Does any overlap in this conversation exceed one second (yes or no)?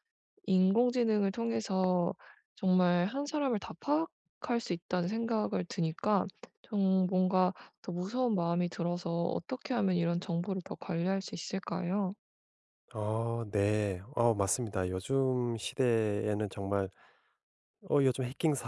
no